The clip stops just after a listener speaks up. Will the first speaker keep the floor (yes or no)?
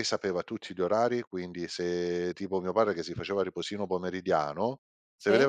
yes